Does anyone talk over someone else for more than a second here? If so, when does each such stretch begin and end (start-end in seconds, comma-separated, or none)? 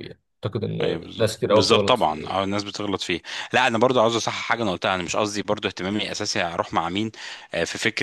0.8-2.4